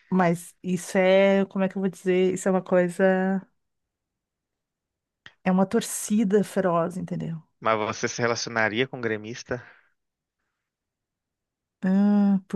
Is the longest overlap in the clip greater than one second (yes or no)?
no